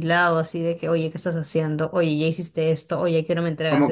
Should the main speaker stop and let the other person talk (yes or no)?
yes